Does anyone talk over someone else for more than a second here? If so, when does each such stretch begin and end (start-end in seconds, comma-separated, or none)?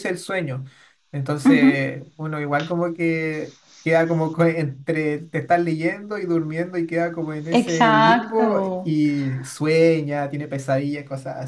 7.5-8.9